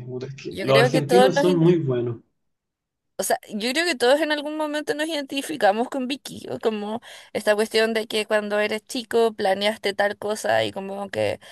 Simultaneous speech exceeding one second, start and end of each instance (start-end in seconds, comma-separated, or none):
0.5-1.7